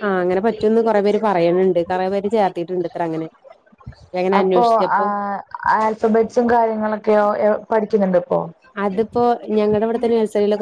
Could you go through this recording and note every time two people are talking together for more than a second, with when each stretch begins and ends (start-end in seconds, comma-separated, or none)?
none